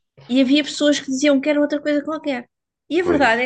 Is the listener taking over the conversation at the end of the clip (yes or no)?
no